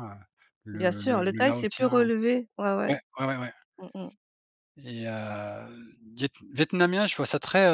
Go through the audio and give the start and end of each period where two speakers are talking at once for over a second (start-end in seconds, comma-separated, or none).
0.7-2.0